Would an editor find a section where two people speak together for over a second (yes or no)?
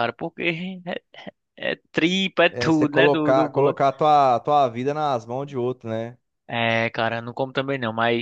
yes